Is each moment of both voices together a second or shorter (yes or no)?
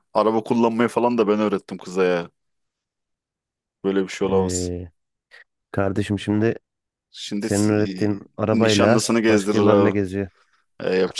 no